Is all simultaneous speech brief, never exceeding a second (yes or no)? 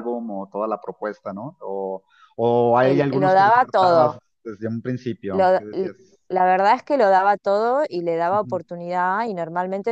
no